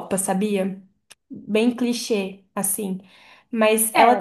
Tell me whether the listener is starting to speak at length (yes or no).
yes